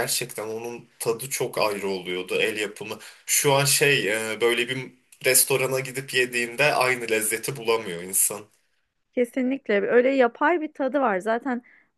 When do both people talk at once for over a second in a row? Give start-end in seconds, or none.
none